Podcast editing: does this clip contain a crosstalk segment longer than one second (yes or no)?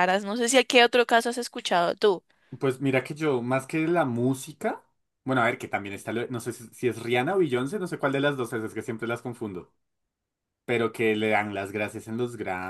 no